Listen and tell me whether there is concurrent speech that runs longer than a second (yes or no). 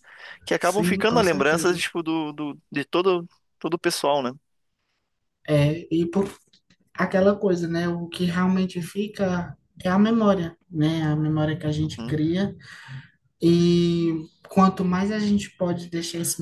yes